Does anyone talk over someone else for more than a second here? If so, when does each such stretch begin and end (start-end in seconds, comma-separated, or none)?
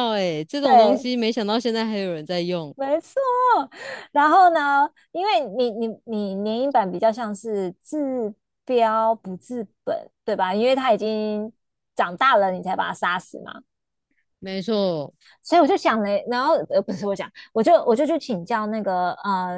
none